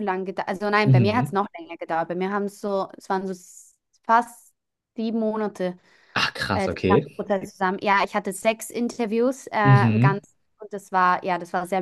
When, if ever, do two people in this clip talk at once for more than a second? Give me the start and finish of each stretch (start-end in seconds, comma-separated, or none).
none